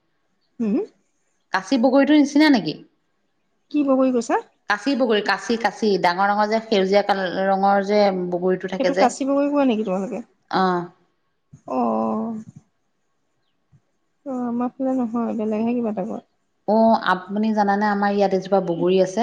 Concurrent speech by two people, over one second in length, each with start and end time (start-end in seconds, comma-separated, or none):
none